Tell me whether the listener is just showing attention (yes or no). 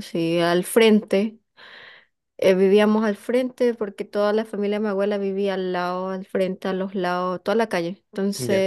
yes